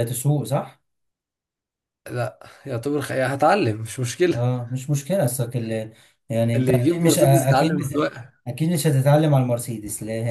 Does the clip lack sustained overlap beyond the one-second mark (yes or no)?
no